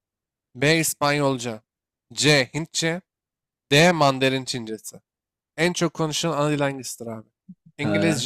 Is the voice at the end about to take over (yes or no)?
no